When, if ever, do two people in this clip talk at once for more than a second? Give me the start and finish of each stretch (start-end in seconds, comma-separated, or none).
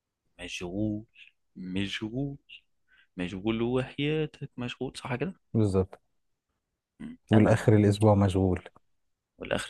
none